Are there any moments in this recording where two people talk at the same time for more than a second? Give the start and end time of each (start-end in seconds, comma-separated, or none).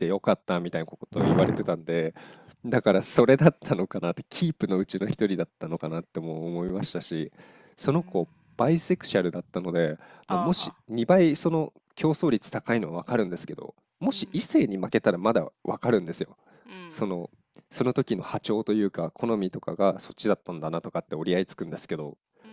none